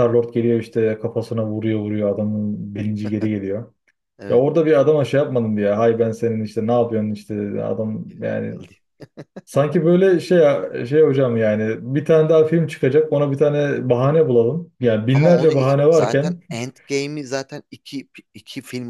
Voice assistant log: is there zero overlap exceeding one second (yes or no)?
no